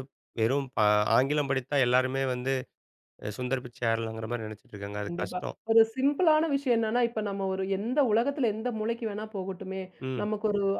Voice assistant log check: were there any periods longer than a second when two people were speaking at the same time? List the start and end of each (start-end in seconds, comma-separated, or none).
none